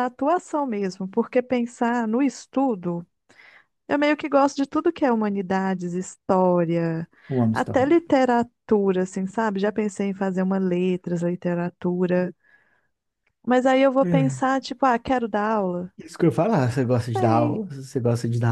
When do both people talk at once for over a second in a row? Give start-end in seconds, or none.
none